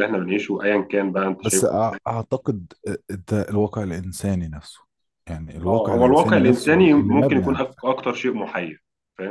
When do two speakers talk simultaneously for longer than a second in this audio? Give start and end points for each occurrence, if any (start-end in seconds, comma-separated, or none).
5.7-7.8